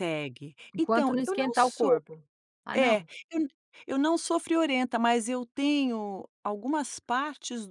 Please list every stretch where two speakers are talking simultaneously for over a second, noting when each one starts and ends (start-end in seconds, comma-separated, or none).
0.7-2.0